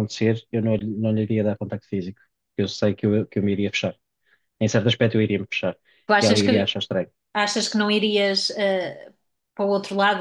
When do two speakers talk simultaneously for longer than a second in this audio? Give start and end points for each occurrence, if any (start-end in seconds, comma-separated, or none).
none